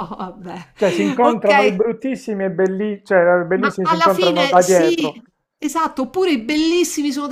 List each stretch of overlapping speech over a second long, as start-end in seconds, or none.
3.5-5.2